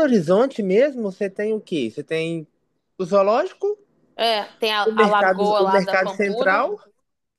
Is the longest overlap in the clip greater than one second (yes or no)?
yes